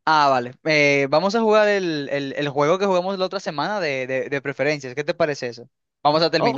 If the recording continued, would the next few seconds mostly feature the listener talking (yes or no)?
yes